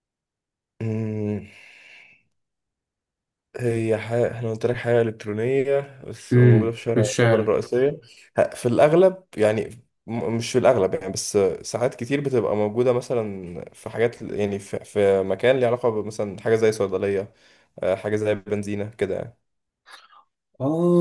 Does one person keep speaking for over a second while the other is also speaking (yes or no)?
yes